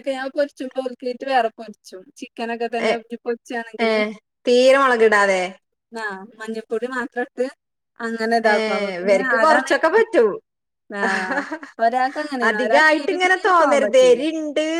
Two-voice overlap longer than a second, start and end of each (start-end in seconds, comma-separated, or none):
12.5-14.2